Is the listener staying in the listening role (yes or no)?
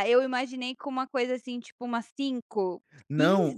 no